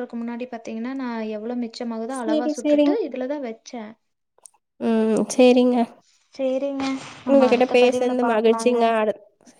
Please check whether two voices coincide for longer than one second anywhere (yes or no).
yes